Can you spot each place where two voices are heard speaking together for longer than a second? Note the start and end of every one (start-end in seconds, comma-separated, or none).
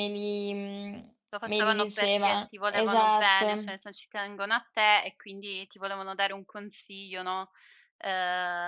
1.3-3.5